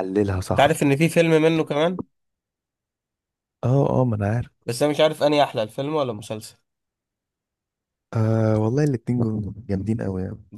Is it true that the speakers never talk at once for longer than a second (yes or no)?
yes